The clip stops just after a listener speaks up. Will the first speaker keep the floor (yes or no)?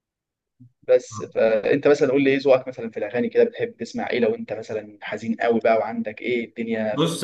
no